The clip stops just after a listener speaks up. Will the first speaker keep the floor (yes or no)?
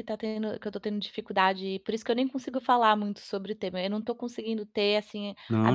yes